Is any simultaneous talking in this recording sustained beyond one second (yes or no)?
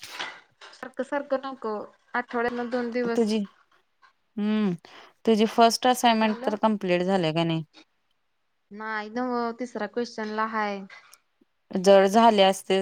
no